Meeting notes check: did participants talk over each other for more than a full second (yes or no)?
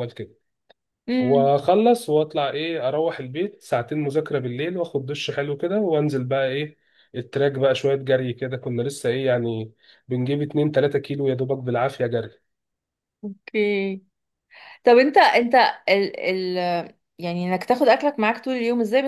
no